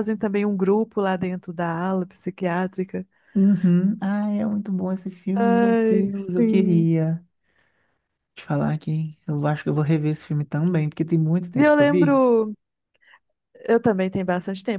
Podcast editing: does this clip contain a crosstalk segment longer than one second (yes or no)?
yes